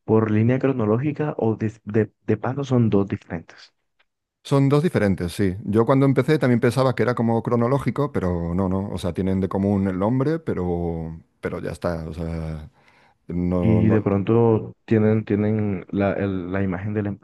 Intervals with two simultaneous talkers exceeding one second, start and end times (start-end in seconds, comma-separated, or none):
none